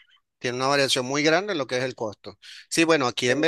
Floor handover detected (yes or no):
no